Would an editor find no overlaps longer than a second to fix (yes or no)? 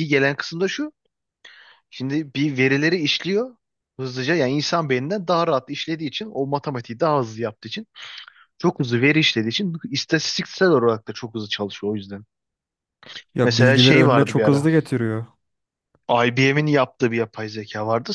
no